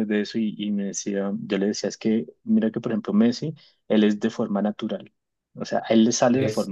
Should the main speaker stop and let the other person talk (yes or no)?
no